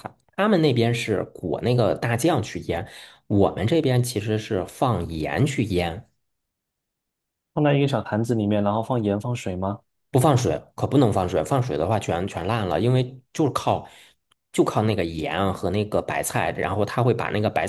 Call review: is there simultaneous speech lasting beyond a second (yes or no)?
no